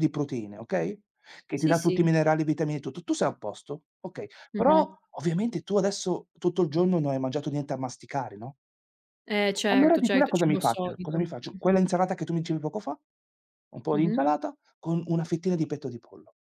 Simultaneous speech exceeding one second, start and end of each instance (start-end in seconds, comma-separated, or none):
9.7-11.8